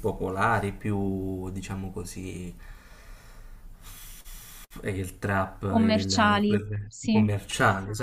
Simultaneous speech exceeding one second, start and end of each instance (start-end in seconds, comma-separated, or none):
5.7-7.3